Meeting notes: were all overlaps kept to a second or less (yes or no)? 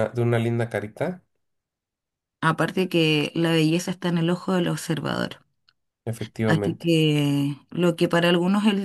yes